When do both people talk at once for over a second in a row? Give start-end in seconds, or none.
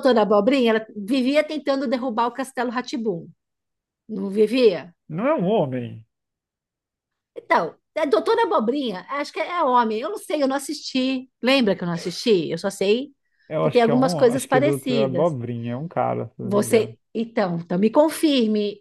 13.6-15.4